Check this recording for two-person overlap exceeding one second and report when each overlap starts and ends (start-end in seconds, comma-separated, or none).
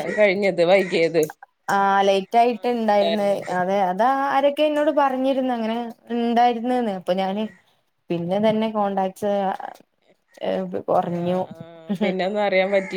2.2-3.5